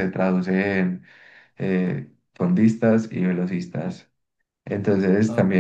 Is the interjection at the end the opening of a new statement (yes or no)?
no